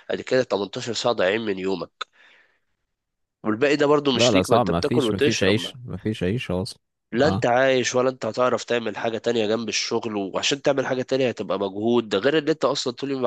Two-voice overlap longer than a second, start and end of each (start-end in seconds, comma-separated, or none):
4.1-5.6